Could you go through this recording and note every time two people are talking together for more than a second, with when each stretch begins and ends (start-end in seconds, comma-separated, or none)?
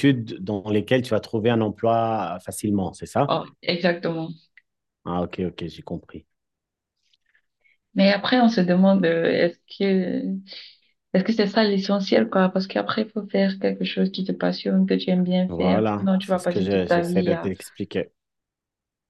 15.5-17.5